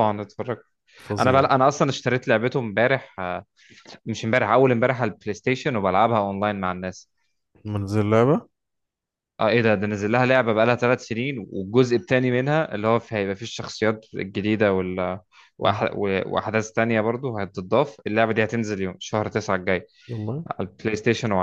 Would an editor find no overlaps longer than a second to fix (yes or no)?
yes